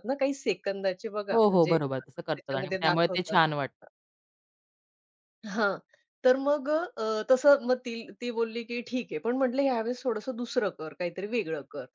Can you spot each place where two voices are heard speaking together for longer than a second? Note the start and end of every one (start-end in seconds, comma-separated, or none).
1.3-3.4